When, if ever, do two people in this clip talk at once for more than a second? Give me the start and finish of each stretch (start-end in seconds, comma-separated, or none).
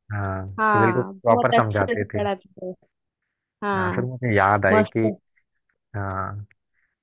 0.6-2.2